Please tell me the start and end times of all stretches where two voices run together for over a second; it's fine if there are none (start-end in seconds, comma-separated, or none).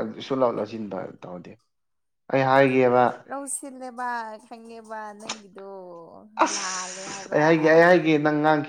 none